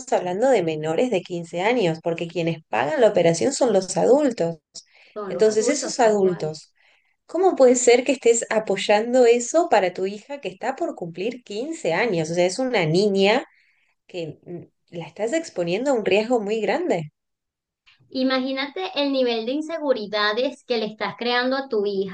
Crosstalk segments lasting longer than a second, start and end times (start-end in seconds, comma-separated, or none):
5.3-6.5